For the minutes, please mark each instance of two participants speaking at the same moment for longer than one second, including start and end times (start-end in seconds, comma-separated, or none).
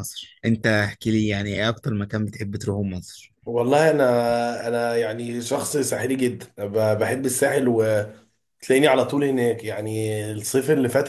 none